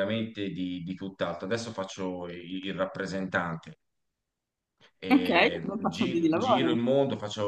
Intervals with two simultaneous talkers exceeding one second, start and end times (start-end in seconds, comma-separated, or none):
5.1-6.8